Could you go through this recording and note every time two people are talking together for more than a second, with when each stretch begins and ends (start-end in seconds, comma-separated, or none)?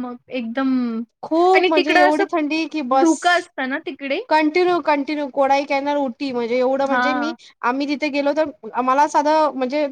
1.6-3.2